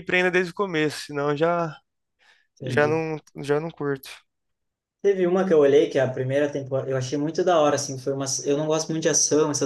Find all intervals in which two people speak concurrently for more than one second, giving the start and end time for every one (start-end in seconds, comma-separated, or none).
none